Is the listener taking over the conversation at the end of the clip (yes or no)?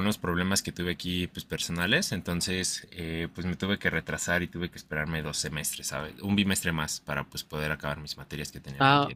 yes